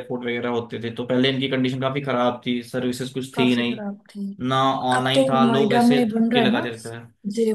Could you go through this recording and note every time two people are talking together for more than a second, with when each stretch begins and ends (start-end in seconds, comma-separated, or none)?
5.0-6.7